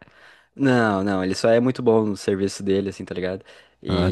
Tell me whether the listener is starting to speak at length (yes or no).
no